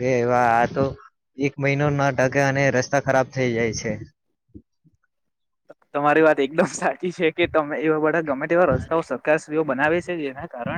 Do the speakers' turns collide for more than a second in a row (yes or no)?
no